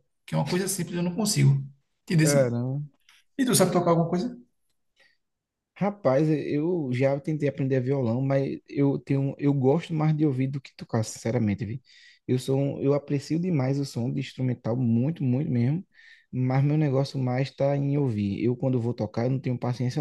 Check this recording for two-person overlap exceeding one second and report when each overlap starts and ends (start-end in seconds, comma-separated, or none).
none